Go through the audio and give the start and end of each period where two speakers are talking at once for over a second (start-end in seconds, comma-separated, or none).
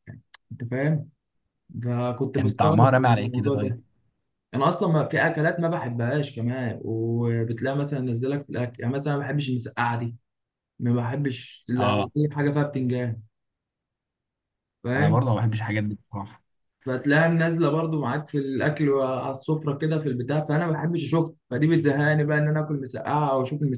2.4-3.8